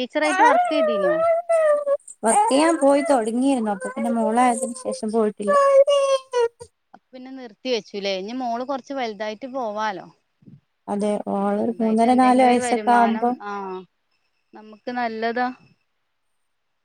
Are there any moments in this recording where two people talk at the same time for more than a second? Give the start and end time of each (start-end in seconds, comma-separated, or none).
11.5-13.3